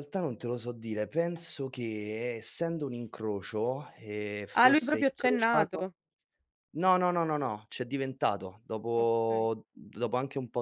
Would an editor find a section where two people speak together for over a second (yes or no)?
yes